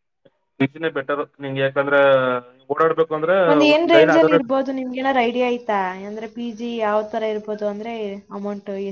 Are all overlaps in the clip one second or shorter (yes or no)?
yes